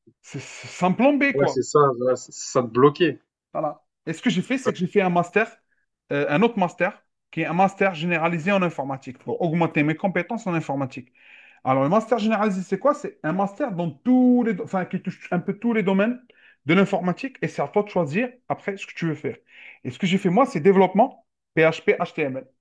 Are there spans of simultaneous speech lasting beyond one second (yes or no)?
no